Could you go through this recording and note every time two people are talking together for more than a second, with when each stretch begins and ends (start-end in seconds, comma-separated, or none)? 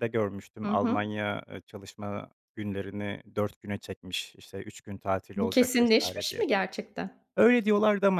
5.3-6.6